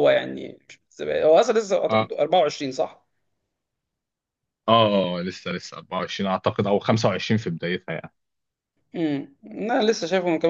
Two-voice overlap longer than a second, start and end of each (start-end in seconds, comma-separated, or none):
none